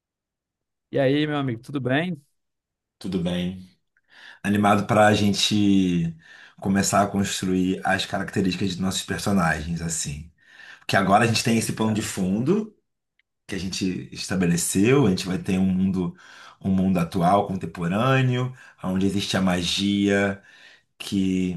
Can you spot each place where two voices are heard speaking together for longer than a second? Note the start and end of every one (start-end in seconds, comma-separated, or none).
none